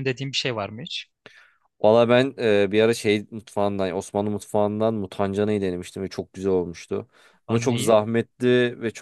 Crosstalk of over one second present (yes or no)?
no